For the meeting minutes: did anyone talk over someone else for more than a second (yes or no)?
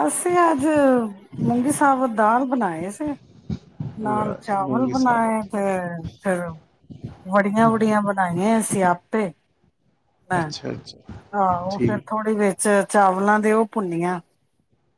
yes